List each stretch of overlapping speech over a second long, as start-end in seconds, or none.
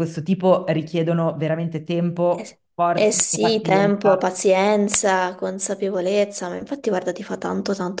2.3-4.3